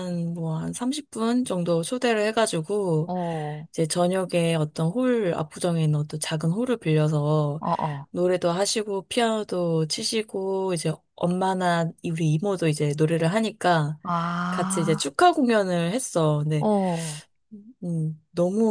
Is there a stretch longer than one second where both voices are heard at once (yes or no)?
no